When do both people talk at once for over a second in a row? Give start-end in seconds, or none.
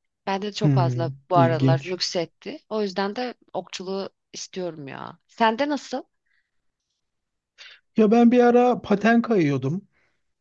0.6-2.0